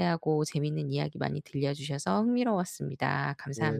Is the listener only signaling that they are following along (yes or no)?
no